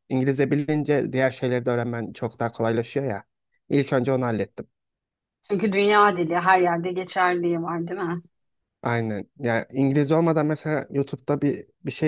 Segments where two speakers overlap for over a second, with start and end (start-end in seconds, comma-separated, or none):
none